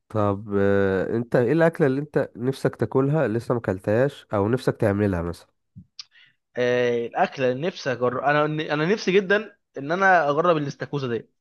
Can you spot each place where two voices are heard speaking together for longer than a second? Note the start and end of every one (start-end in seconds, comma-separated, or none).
none